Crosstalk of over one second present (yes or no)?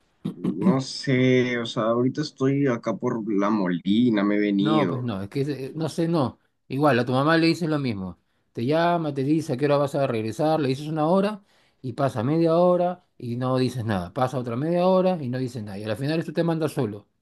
no